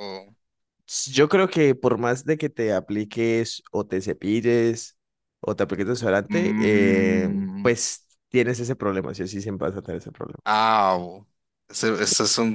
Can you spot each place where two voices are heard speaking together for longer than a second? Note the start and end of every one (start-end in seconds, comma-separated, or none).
6.3-7.8